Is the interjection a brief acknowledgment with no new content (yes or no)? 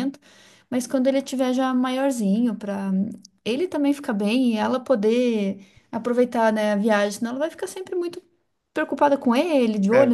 yes